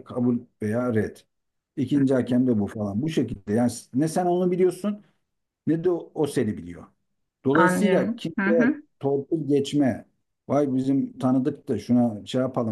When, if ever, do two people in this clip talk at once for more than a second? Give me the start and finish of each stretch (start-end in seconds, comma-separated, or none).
7.5-8.8